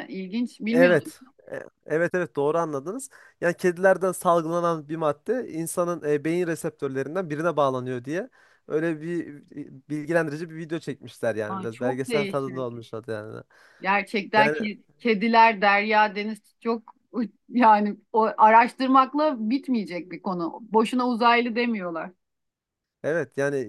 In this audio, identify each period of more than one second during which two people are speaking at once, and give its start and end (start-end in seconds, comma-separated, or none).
11.5-12.8